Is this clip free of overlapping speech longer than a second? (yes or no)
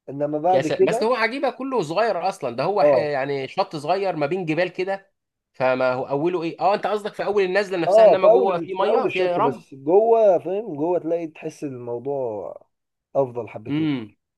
no